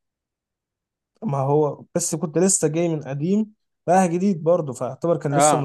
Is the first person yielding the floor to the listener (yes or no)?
yes